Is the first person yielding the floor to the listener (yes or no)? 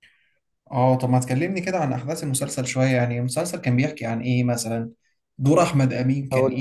no